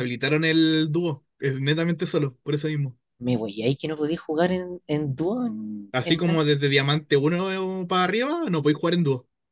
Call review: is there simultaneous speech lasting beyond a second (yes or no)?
no